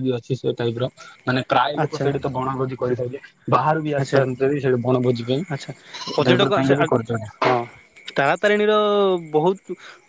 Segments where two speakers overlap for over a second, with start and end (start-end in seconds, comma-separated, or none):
none